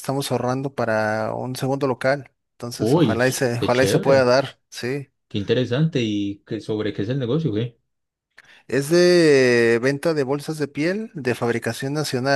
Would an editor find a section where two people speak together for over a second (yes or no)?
yes